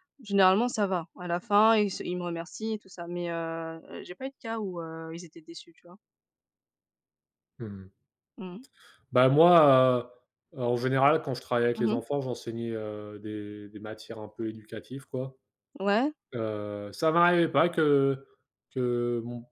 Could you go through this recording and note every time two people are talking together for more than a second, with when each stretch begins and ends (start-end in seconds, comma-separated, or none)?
none